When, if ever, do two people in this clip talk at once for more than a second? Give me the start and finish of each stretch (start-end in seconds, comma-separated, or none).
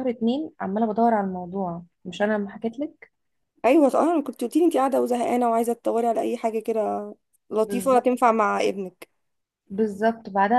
none